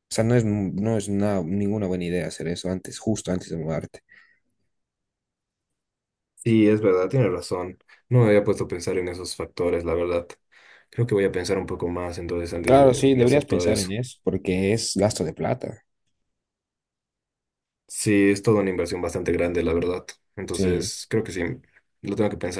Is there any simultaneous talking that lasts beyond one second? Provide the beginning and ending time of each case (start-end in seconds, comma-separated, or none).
12.6-13.9